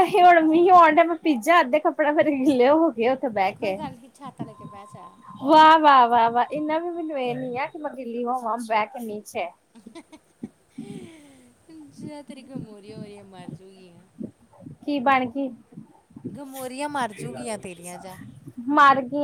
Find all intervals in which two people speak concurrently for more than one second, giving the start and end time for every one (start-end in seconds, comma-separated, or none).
none